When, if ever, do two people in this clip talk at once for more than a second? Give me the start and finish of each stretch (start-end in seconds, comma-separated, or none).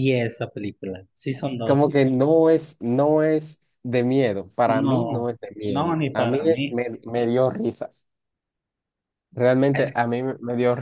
4.7-6.8